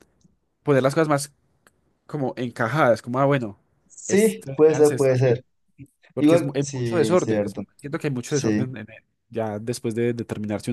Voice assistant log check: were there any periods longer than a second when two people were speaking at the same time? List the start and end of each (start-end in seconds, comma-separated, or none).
4.1-5.4, 6.2-7.6